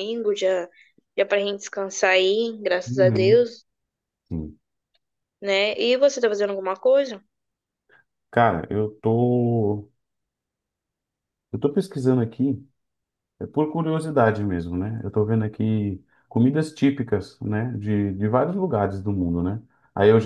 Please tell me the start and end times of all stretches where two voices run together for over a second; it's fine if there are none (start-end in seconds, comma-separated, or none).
none